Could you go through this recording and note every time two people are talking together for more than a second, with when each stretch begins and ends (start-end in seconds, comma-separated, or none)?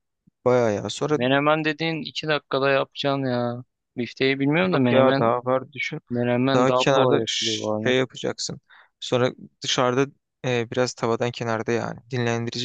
6.5-8.0